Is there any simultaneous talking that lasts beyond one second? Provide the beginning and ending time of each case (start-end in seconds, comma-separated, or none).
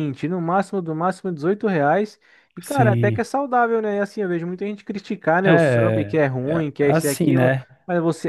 5.4-7.6